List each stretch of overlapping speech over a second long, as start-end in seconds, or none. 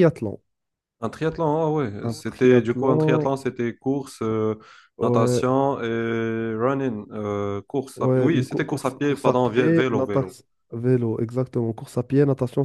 2.0-3.4, 8.0-10.3